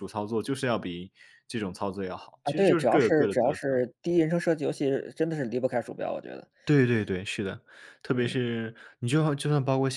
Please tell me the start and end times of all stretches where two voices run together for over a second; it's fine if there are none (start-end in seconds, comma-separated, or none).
2.4-3.8